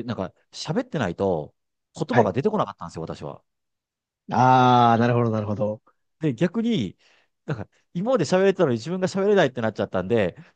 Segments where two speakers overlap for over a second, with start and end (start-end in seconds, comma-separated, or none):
none